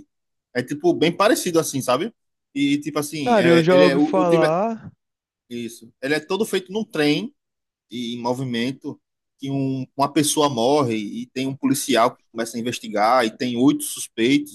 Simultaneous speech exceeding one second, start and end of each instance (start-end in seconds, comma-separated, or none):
3.2-4.5